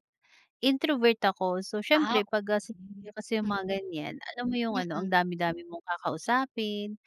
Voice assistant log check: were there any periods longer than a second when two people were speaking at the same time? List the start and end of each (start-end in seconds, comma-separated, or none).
1.9-3.8